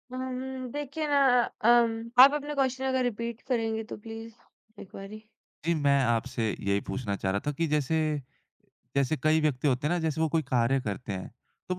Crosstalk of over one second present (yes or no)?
no